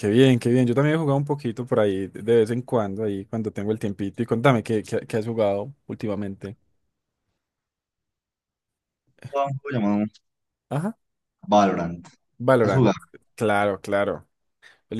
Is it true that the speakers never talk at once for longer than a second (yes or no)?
yes